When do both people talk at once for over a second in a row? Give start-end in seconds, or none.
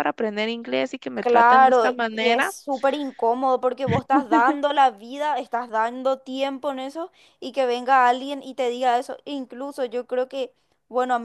1.1-2.5